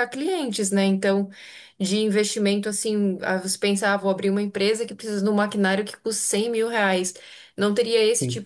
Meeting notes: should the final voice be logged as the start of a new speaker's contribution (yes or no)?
no